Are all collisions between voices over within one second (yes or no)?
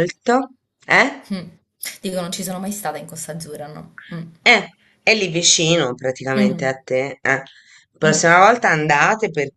yes